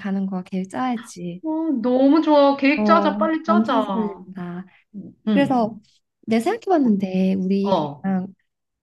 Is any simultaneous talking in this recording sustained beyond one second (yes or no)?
yes